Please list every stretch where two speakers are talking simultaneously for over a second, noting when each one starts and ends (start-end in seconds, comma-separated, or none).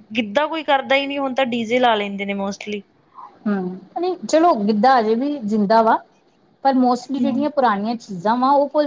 none